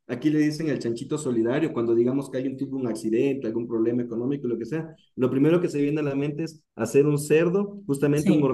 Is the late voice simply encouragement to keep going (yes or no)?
yes